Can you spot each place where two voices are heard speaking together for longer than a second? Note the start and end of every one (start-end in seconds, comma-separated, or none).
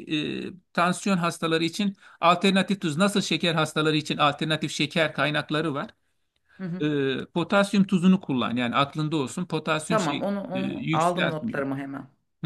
9.9-11.6